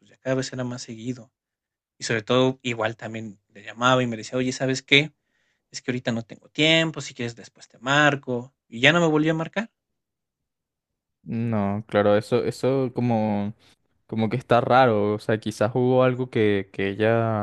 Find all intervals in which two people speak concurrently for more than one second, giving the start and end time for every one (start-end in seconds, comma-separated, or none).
none